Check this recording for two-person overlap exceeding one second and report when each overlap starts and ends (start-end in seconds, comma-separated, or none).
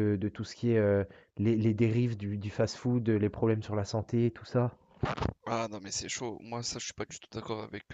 none